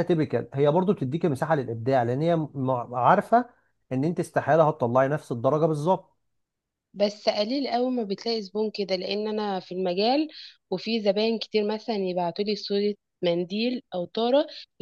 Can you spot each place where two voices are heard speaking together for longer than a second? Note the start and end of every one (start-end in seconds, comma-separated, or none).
none